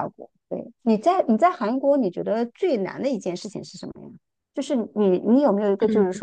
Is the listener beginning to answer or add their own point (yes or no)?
no